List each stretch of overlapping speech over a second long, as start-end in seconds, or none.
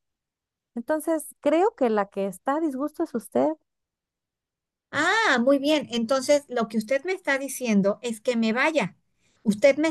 none